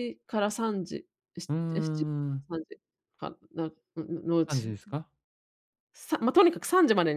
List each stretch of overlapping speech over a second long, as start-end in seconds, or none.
none